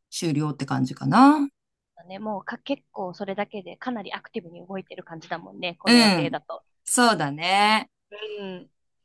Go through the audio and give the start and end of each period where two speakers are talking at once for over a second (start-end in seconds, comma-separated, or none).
none